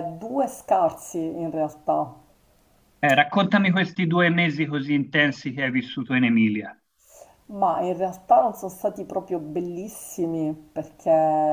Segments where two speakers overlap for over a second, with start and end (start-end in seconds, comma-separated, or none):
none